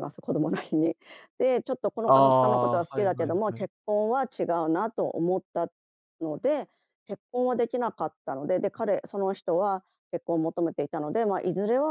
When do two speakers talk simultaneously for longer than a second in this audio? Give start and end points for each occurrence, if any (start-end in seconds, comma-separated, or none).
2.1-3.7